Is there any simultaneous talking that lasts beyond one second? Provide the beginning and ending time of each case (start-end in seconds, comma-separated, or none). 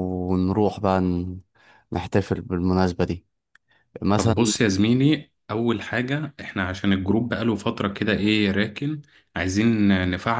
none